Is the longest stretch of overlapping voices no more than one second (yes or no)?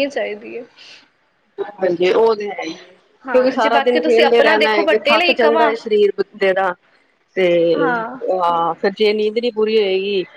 no